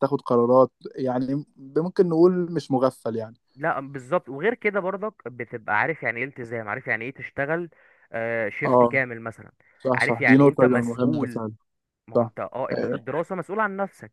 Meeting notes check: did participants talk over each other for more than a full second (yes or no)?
yes